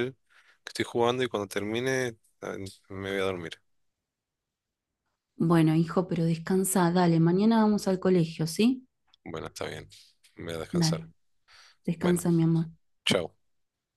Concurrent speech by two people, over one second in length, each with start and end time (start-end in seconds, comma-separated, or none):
none